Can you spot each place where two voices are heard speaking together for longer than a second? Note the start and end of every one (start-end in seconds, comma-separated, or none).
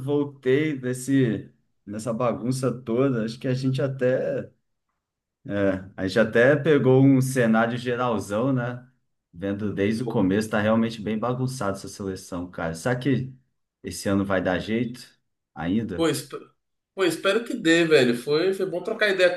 none